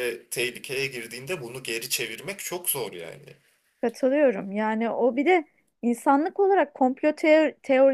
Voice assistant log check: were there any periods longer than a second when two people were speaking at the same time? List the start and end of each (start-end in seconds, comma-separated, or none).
none